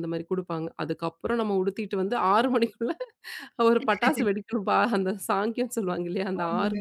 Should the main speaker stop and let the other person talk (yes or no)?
no